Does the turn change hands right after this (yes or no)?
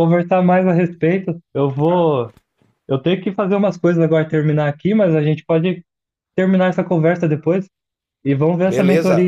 yes